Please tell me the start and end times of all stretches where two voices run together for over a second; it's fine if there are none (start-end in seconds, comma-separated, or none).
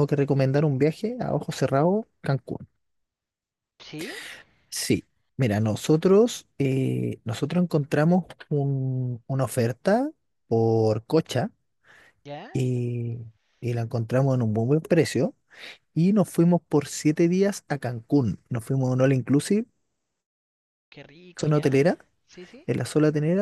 none